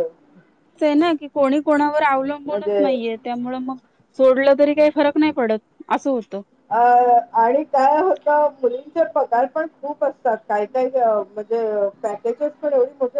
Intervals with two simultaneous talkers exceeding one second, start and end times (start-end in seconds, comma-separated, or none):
none